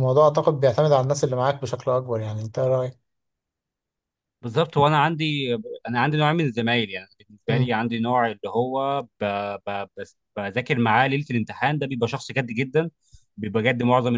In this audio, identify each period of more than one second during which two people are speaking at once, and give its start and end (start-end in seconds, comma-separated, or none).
none